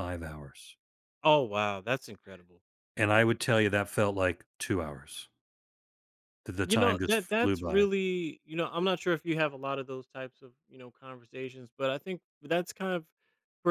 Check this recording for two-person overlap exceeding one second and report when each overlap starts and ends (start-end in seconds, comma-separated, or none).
6.6-7.9